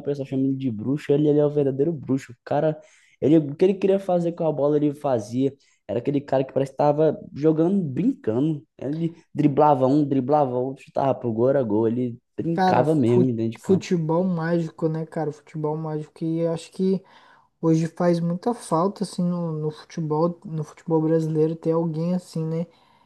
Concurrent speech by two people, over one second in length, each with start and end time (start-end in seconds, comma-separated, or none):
12.5-13.9